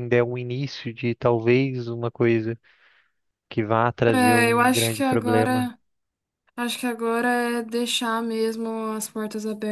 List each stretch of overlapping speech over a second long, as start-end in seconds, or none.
4.1-5.7